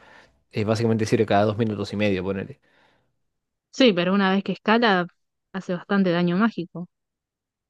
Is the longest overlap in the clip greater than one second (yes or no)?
no